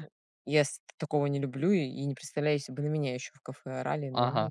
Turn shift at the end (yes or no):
yes